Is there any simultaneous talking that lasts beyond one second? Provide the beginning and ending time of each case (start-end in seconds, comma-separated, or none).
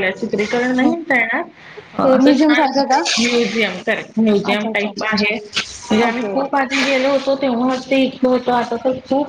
none